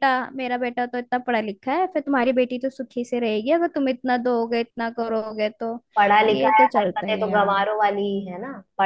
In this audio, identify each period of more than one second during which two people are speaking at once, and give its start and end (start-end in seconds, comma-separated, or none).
6.3-7.7